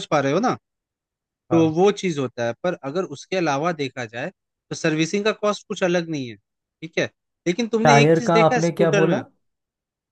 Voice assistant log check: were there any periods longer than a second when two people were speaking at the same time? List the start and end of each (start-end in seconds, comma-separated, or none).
7.8-9.2